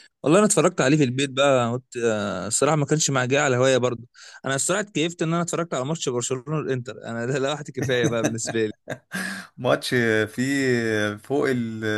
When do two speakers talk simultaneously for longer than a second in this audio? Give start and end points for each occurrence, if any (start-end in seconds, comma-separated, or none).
none